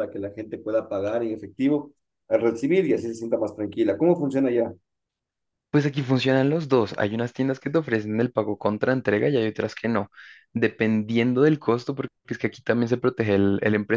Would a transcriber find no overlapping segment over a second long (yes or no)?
yes